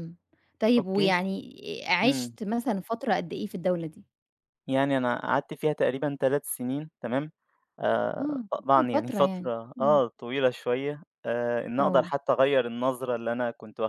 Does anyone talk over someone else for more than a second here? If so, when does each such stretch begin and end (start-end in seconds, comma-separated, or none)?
8.2-10.0